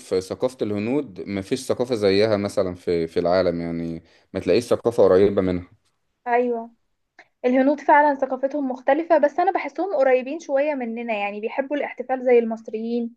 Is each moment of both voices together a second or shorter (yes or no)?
yes